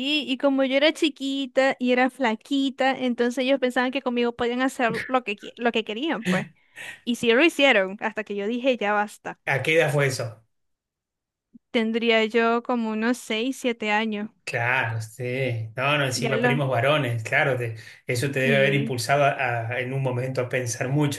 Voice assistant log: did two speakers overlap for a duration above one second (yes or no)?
no